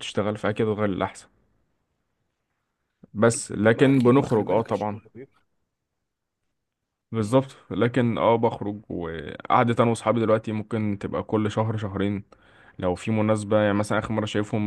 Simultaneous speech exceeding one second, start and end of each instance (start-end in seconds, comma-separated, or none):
3.7-5.0